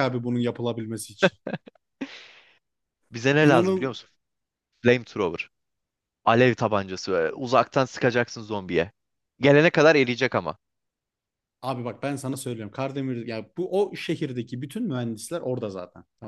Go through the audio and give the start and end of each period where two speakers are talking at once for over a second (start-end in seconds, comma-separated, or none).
none